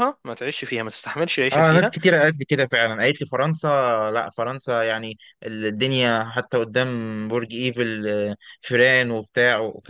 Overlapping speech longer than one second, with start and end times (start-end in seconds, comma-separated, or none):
none